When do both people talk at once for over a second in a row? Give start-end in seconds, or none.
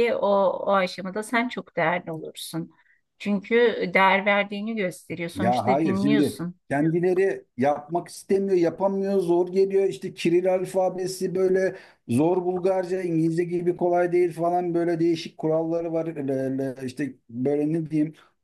5.3-6.6